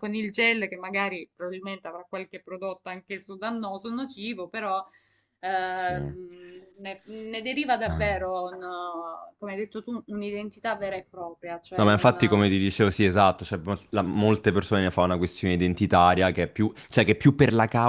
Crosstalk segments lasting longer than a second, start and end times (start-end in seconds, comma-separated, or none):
none